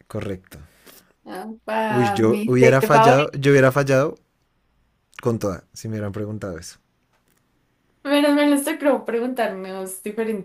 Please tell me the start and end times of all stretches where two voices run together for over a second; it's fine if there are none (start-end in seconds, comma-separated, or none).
1.9-3.3